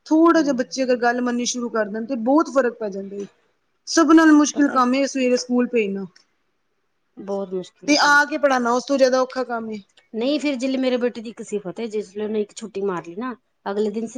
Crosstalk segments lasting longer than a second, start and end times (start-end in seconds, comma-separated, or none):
none